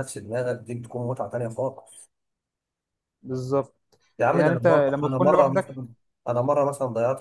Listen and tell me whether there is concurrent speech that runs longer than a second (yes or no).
yes